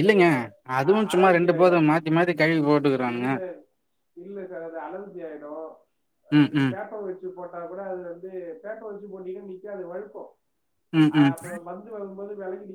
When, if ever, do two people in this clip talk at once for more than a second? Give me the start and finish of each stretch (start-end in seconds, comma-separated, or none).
none